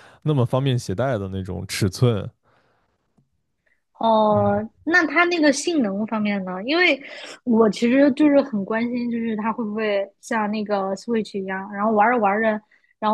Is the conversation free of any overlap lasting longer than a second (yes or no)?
yes